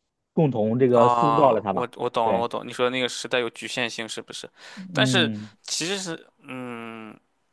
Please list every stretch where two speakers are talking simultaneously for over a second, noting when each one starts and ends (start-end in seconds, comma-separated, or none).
0.9-2.5